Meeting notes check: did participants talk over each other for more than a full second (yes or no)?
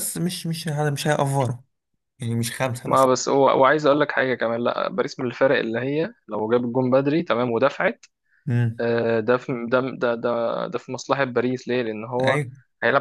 no